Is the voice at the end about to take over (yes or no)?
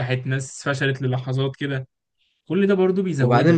yes